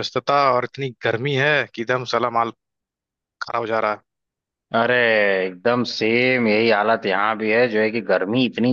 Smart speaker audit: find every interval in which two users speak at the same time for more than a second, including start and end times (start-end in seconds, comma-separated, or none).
none